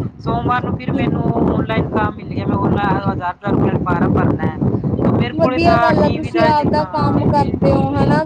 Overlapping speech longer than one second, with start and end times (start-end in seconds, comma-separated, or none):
5.4-7.2